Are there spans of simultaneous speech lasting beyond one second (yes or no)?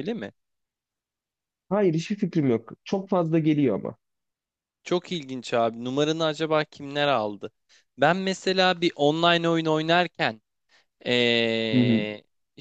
no